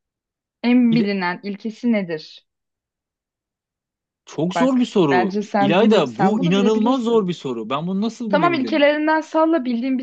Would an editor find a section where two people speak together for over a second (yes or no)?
yes